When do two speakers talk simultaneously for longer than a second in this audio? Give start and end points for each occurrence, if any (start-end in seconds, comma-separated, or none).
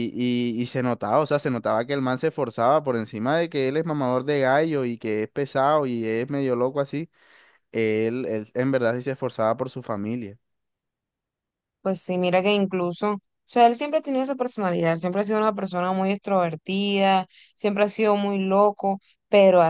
none